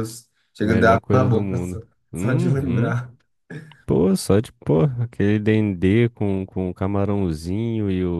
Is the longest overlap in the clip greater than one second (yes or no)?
yes